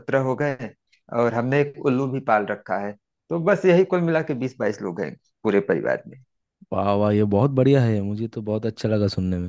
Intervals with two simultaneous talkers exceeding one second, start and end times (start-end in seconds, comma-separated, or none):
none